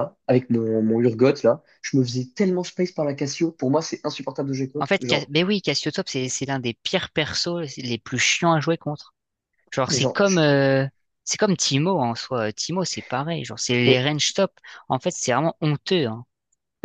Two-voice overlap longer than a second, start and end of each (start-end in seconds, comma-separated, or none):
none